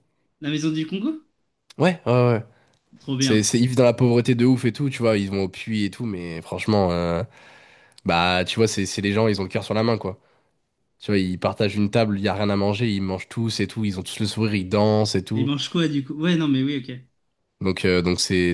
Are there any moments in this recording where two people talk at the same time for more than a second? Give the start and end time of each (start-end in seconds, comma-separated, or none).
none